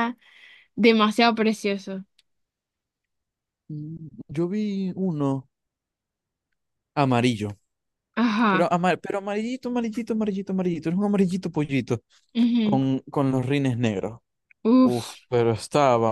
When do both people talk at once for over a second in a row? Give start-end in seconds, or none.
none